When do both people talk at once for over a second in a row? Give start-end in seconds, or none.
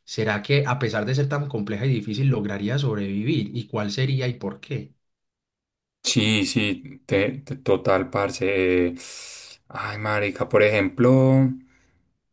none